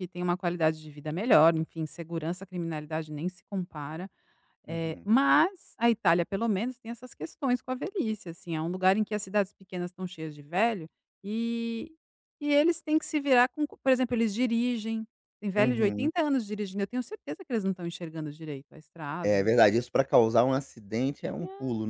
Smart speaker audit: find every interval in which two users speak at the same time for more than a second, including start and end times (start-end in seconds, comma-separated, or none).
none